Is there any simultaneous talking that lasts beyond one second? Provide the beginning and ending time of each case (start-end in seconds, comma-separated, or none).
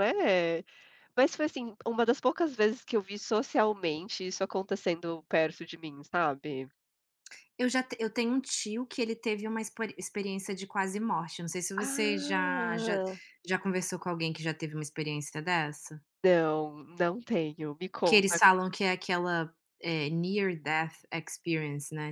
11.8-13.0